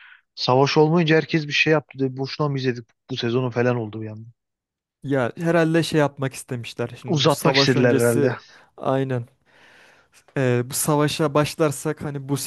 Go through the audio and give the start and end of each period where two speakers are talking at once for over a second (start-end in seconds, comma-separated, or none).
7.1-8.4